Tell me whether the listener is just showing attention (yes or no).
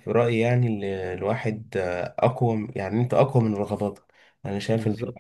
yes